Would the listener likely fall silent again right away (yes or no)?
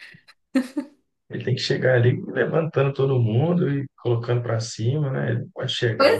no